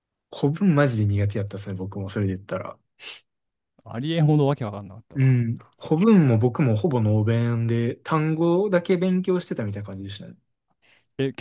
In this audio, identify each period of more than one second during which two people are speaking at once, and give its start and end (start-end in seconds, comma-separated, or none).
none